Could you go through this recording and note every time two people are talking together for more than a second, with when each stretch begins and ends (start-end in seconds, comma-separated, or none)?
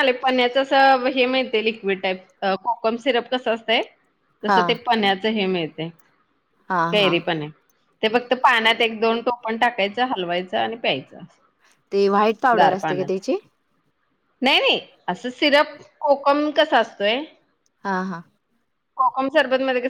none